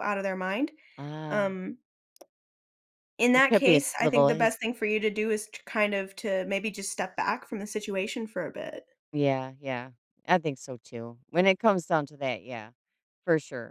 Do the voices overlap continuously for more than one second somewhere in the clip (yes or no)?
yes